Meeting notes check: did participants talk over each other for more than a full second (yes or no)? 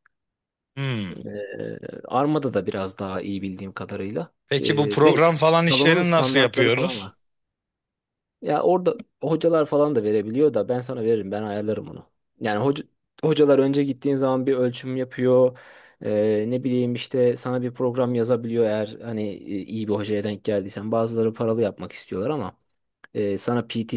yes